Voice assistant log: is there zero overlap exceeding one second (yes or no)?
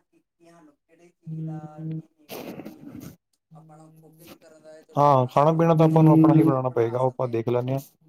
no